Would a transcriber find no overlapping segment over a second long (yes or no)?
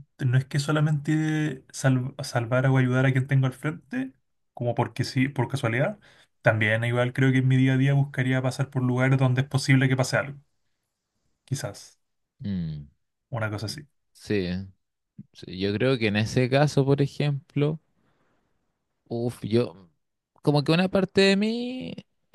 yes